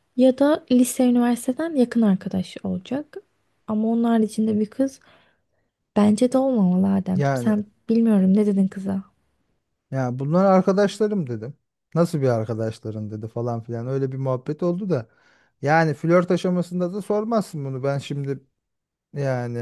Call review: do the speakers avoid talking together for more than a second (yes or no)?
yes